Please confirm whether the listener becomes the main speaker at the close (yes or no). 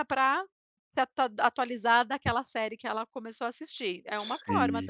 yes